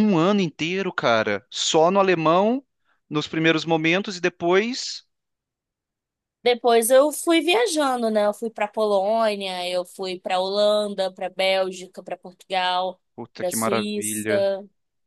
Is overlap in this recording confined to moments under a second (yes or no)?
no